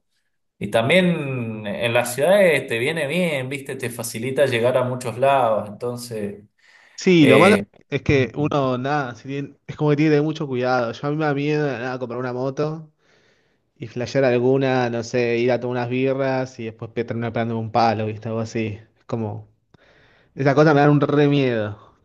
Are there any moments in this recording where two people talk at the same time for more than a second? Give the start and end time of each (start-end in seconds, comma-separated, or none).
none